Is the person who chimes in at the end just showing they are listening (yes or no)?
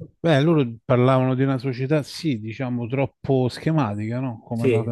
yes